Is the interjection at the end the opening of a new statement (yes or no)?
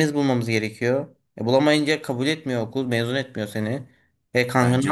no